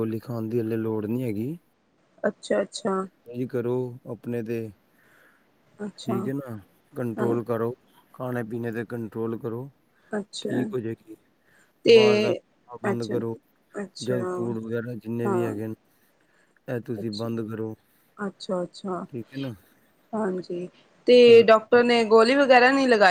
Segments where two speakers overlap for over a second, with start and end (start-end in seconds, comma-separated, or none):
none